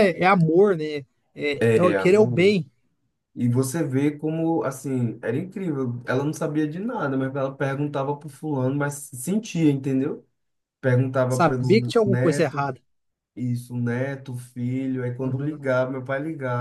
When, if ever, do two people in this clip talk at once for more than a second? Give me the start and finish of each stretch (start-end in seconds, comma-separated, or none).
11.3-12.7